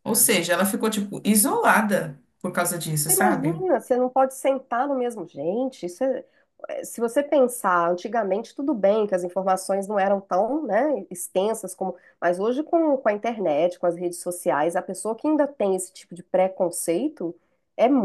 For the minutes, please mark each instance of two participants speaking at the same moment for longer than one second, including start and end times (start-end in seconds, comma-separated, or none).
none